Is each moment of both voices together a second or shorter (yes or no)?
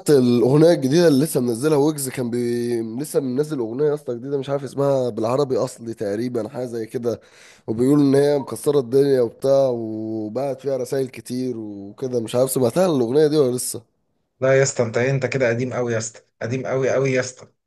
yes